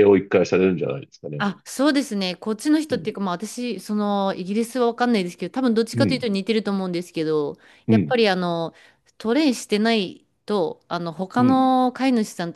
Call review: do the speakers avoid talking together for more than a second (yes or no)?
yes